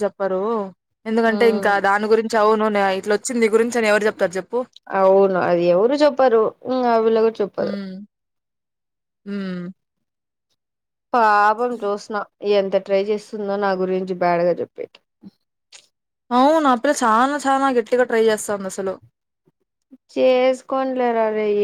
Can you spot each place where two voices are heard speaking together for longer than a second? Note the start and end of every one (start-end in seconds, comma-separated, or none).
none